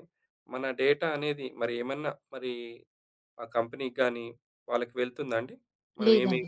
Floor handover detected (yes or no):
no